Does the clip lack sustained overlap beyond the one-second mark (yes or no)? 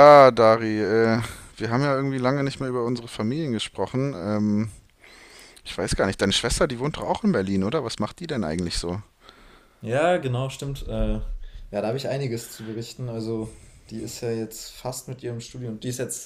yes